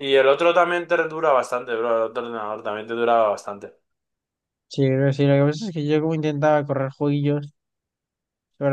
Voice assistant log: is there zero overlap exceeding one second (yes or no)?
yes